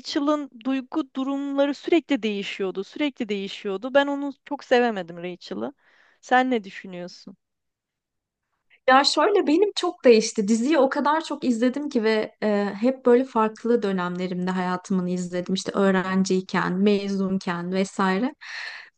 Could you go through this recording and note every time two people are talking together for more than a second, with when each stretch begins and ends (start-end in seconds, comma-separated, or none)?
none